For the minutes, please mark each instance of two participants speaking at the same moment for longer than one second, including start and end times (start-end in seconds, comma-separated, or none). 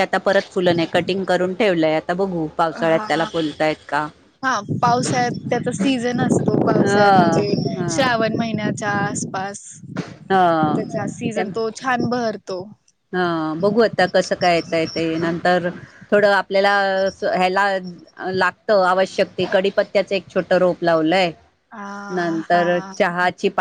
6.7-8.1